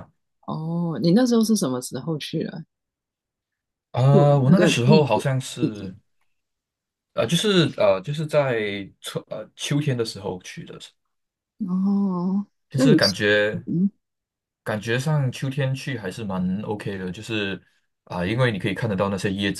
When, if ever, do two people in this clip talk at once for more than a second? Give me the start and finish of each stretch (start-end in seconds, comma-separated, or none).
4.1-5.9